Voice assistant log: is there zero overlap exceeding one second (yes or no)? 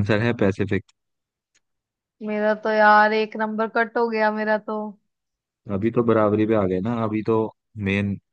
yes